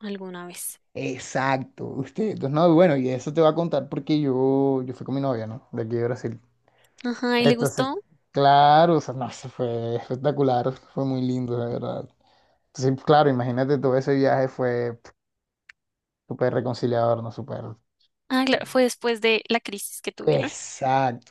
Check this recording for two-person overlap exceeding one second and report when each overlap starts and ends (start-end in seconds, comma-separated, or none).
none